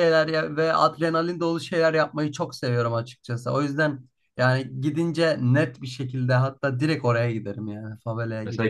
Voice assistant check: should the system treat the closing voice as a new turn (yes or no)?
yes